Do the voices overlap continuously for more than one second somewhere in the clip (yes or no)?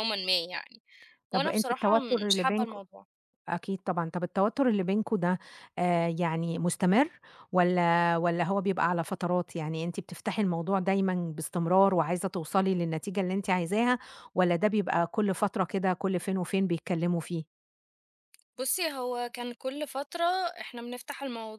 yes